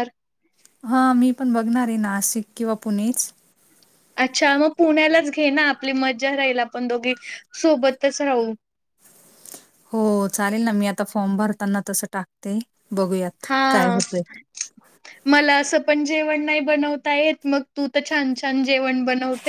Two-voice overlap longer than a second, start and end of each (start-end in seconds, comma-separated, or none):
none